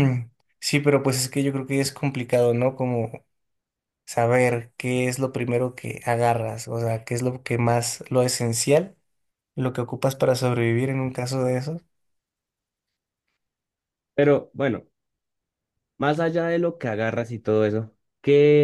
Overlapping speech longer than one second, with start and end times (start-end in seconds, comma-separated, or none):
none